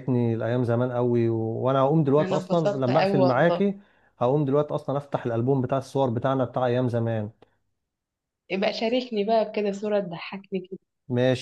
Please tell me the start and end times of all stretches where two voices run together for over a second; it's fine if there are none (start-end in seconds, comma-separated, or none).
2.2-3.6